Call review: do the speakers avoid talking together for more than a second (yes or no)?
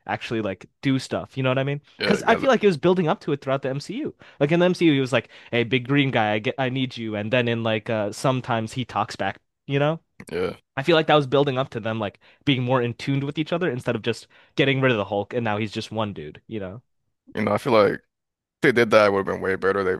yes